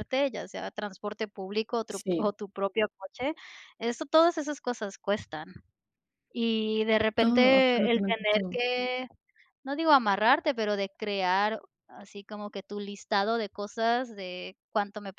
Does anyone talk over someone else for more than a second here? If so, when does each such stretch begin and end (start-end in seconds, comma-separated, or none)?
7.2-8.6